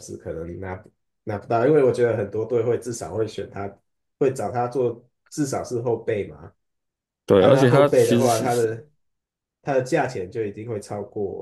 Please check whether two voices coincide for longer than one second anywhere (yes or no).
yes